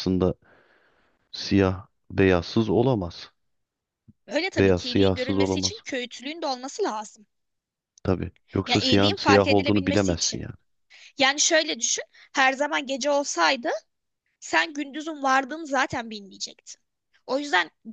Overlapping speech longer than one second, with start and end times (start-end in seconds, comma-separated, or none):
4.6-5.8, 8.7-10.5